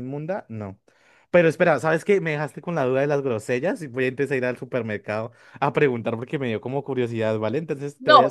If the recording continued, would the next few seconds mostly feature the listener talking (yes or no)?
yes